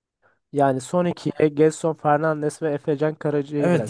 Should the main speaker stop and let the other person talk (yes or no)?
yes